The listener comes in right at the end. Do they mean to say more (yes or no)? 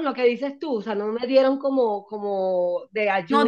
yes